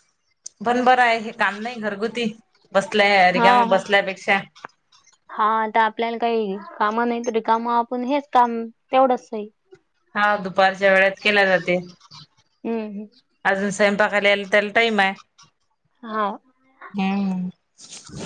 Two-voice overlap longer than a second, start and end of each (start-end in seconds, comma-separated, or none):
none